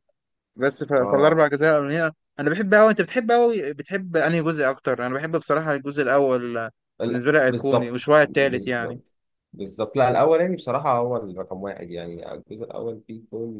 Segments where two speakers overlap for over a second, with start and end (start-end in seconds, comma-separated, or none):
7.1-9.0